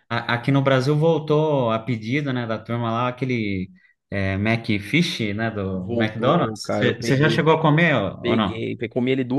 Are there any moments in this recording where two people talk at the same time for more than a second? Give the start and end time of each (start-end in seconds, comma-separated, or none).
5.7-7.5